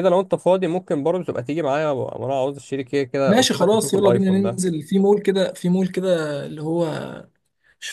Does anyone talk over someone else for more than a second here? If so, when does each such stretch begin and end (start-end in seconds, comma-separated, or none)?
3.3-4.6